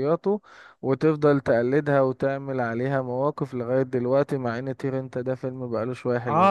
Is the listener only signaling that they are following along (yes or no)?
no